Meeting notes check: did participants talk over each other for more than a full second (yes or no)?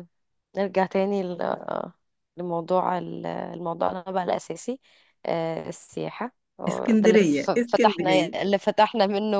yes